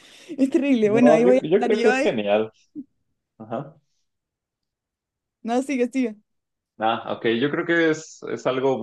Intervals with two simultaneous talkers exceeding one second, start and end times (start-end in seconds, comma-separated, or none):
0.8-2.2